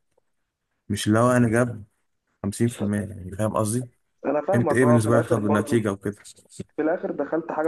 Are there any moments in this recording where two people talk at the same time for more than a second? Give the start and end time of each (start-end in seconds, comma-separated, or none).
4.5-5.8